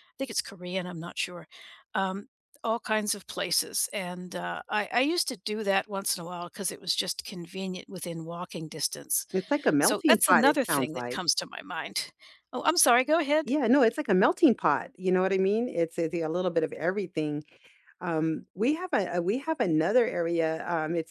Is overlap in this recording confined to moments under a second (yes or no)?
no